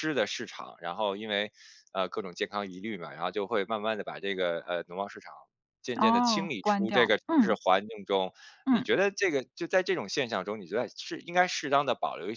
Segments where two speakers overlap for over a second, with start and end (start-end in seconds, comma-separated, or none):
6.0-7.6